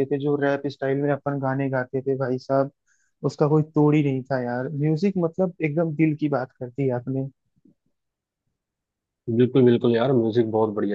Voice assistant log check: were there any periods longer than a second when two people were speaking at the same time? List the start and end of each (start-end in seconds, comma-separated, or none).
none